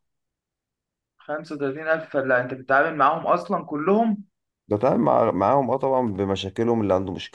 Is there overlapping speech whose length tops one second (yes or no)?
no